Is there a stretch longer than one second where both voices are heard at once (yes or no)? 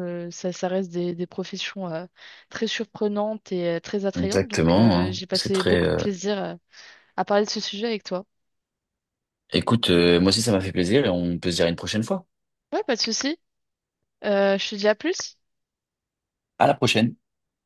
yes